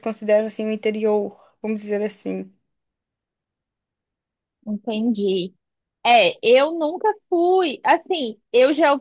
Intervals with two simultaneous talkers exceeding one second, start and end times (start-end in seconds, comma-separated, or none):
none